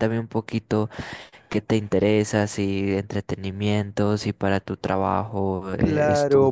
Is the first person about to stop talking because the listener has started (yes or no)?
yes